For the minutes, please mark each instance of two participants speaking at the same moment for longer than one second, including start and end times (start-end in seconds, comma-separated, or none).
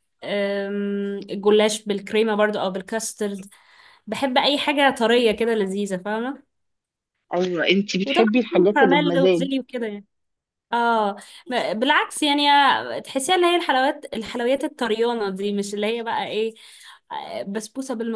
8.0-9.5